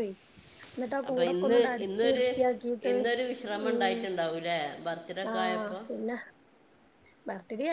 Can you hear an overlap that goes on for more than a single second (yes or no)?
no